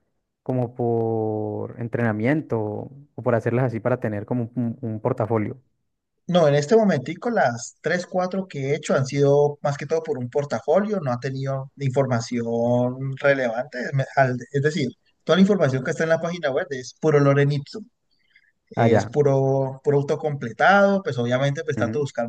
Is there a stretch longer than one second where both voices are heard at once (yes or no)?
no